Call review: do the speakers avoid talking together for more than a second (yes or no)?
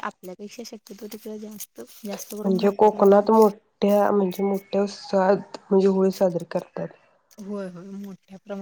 no